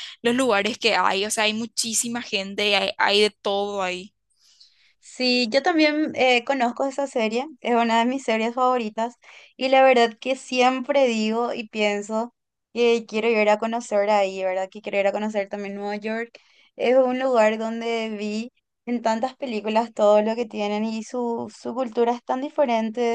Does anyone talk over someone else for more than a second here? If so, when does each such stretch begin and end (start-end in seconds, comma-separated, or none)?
none